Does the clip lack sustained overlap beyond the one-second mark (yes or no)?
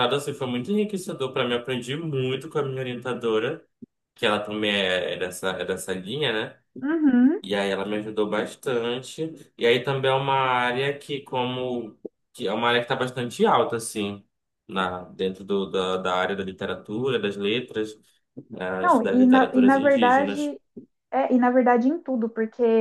no